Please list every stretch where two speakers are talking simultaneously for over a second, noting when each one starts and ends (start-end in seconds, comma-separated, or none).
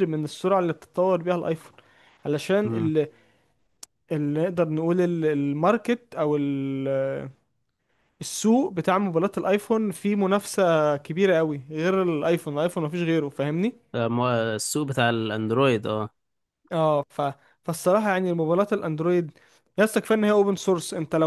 none